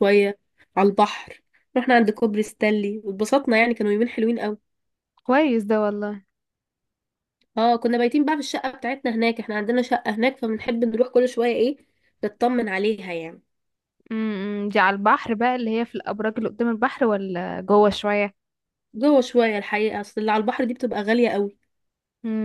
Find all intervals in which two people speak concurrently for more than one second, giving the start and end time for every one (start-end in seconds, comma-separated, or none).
none